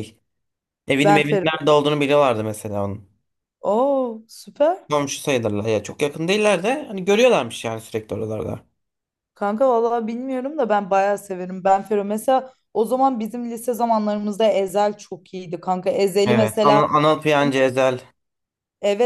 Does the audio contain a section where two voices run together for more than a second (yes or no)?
no